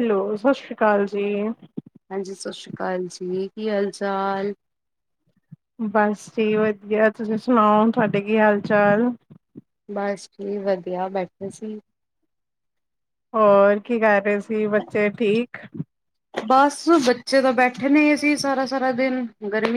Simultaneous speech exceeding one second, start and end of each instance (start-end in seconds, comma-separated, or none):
none